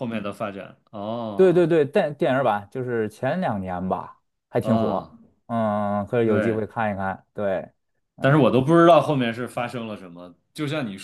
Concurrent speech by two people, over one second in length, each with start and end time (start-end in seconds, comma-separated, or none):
none